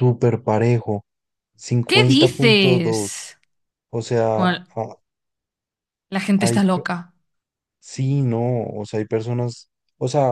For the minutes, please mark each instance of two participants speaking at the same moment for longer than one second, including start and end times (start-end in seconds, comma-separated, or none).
1.9-3.3